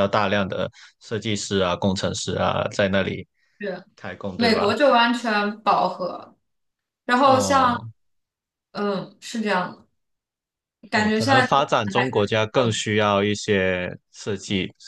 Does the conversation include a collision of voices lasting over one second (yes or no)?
yes